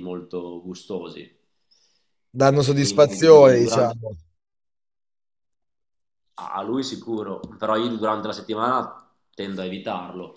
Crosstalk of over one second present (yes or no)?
yes